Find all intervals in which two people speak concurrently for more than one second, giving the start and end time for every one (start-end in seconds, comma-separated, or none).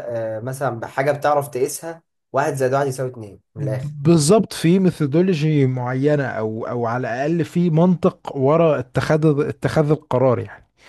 none